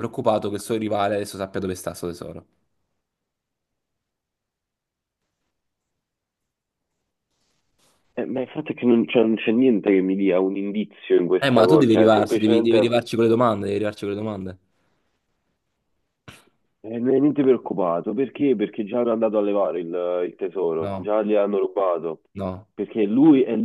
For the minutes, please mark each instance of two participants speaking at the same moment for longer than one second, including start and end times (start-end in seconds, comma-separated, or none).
11.4-13.0